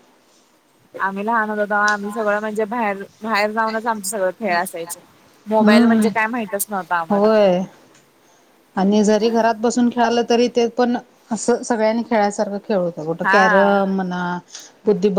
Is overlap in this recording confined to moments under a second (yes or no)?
yes